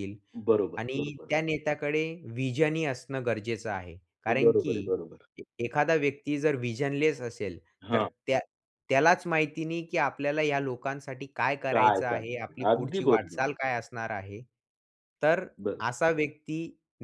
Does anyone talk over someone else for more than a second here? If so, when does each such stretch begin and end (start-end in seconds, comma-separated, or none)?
11.7-13.4